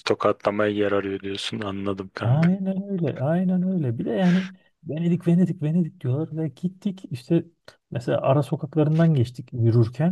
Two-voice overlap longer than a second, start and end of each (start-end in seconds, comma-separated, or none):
none